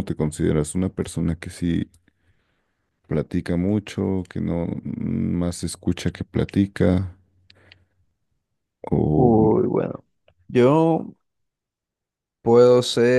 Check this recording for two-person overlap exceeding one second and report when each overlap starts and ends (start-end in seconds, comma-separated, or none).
none